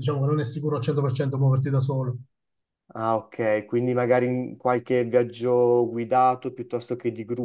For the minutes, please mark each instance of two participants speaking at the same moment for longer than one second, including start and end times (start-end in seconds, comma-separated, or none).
none